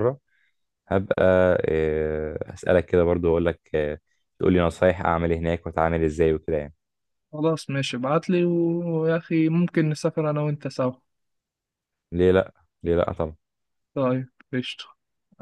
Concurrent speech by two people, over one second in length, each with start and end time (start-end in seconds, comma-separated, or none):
none